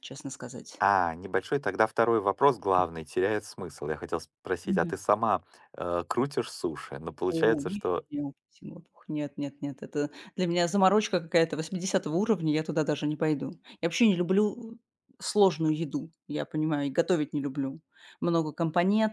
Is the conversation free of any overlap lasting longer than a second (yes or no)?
yes